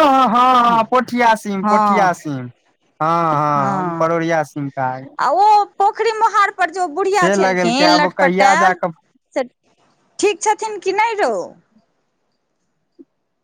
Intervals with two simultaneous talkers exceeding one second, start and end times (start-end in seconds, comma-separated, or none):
7.2-8.8